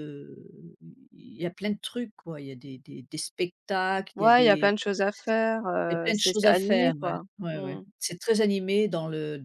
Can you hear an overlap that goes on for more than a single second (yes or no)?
yes